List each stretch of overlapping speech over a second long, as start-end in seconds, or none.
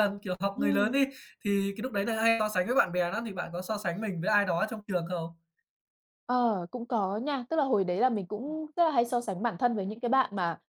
none